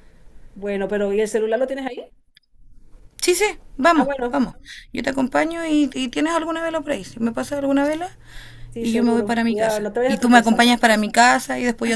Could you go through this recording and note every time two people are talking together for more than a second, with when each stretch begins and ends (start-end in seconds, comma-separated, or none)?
8.8-10.6